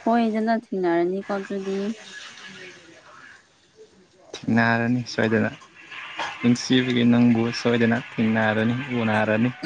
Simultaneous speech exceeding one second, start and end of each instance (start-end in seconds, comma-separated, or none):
none